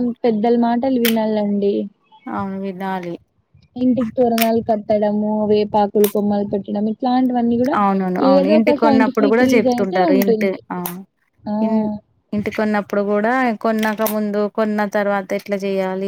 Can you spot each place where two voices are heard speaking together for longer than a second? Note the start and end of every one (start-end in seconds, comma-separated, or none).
8.3-10.6